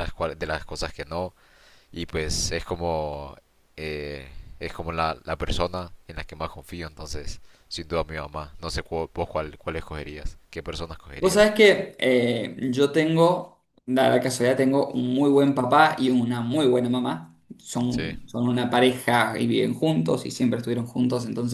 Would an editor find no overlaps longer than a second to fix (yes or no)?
yes